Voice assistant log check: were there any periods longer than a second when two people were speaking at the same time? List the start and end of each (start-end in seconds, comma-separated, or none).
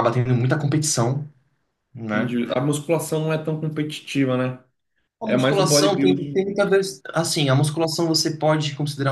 5.2-6.5